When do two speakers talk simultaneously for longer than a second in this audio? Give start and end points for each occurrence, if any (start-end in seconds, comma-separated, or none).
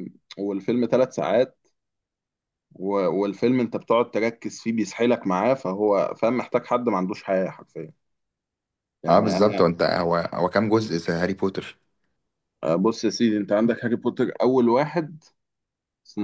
none